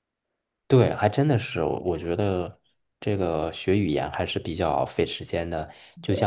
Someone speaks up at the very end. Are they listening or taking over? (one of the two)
listening